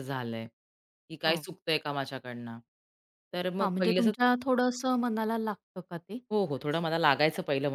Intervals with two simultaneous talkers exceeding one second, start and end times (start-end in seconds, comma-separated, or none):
none